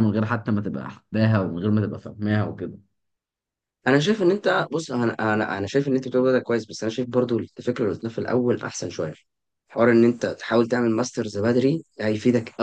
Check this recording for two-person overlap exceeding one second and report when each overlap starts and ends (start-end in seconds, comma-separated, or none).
none